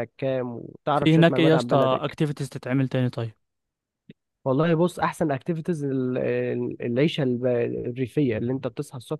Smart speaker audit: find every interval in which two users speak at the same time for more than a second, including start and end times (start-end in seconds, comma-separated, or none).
0.9-2.1